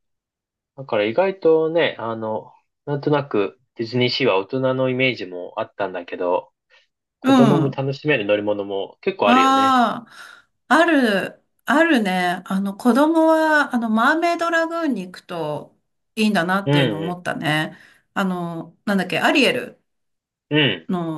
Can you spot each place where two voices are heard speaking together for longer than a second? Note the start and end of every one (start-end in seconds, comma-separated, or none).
none